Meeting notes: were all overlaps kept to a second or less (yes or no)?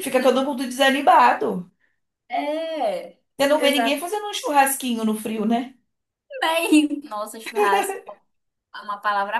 yes